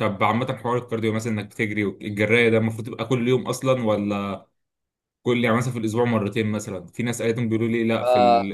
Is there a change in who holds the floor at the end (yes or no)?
no